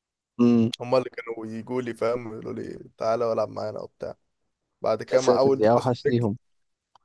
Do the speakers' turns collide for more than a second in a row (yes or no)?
yes